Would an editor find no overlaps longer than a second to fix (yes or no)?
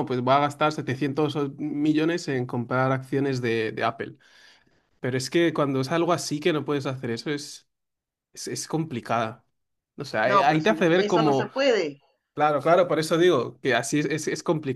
no